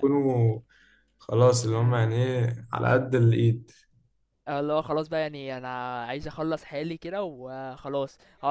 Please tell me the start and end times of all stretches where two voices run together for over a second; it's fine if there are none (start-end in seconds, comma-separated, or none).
none